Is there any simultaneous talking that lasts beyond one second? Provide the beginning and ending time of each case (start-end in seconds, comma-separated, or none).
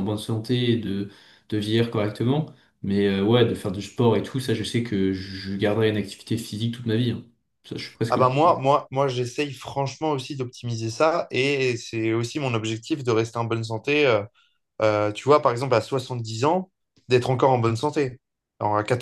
none